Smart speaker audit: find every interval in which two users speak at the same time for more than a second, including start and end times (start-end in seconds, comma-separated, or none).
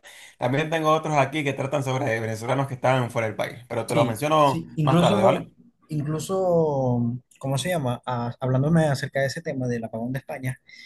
3.9-5.5